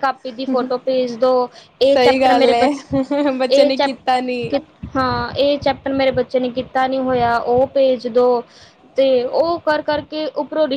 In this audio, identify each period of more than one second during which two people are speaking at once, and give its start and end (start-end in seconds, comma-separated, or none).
1.9-3.9